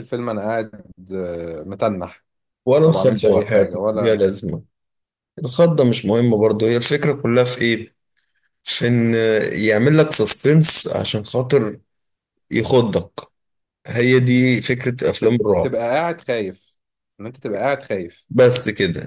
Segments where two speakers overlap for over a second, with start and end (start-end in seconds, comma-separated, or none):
2.9-4.3